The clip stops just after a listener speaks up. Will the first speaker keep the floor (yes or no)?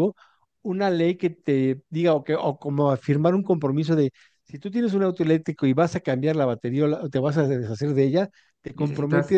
yes